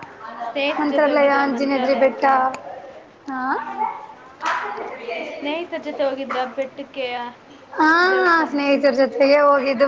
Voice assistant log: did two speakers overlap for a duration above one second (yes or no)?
yes